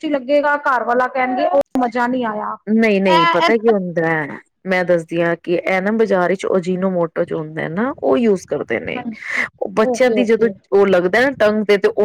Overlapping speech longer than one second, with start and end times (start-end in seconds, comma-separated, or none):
none